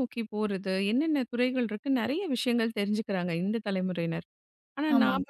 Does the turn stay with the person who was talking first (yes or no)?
yes